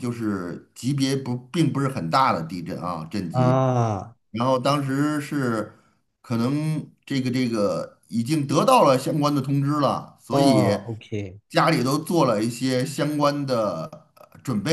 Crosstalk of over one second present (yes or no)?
no